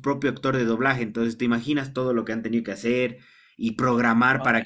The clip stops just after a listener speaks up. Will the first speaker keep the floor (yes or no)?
yes